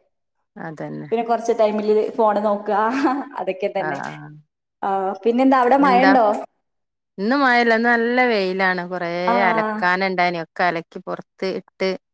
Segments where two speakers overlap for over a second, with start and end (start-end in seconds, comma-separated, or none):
none